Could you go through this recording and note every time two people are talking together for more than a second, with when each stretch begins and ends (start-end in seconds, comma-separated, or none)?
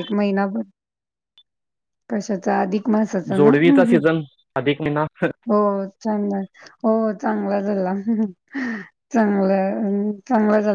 none